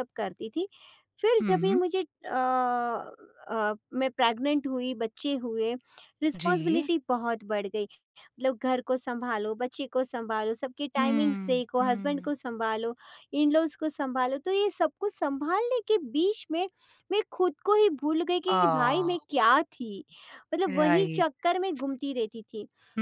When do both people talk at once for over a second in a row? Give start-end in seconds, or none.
11.0-12.3